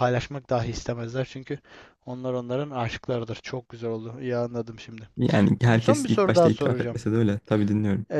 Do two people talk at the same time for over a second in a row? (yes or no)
yes